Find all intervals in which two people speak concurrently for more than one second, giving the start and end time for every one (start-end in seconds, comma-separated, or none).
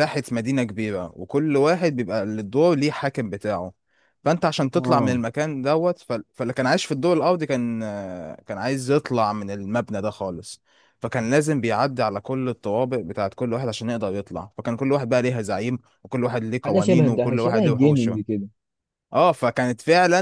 16.6-18.2